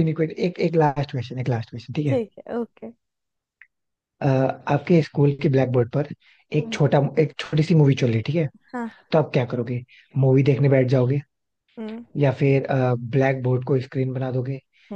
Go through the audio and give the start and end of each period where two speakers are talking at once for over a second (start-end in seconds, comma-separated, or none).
none